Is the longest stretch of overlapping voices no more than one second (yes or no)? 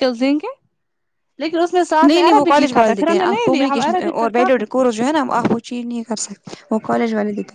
no